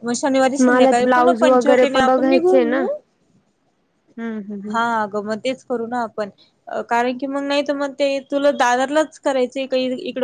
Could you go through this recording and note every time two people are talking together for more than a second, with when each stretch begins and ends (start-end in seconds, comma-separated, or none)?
0.7-2.0